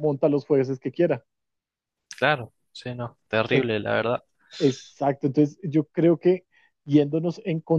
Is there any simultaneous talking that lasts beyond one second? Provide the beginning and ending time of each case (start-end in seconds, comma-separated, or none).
none